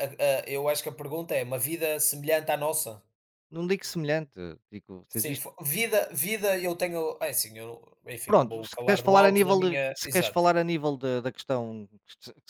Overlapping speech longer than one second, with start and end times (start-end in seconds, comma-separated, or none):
8.2-10.5